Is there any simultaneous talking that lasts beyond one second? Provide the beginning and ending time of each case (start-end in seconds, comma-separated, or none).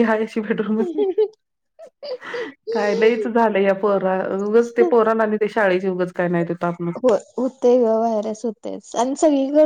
none